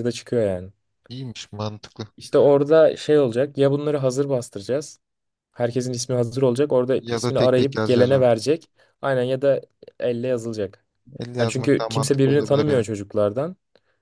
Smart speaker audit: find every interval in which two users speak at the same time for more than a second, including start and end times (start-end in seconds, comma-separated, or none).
7.0-8.3, 11.4-12.9